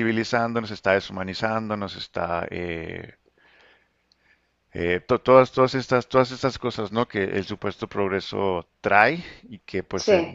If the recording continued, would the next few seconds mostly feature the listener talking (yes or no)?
no